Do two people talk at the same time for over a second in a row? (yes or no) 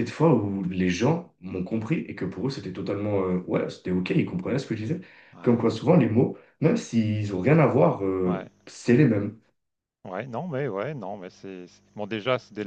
no